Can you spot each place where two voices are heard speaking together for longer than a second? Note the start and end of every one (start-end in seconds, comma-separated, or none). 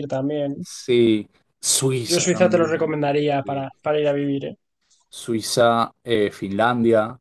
2.0-3.7